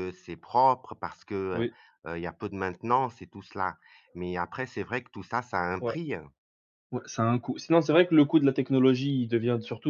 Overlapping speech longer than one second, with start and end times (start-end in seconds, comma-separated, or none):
none